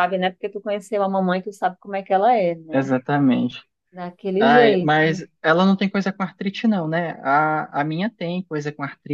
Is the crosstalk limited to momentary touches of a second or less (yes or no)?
yes